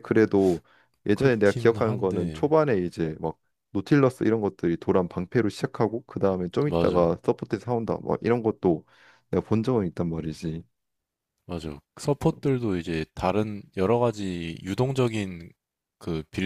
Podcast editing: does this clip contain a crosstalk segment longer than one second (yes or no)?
yes